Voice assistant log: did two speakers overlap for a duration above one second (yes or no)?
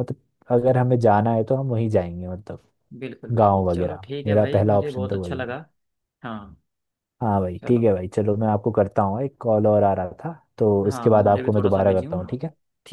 yes